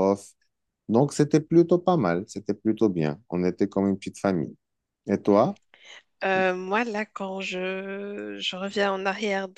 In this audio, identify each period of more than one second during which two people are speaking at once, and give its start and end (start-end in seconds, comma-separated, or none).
none